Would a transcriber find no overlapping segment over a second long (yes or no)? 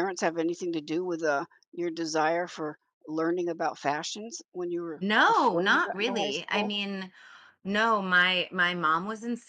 no